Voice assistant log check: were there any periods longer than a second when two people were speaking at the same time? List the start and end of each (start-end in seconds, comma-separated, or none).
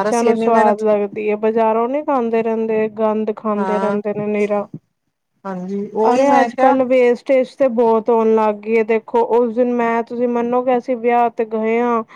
5.5-6.8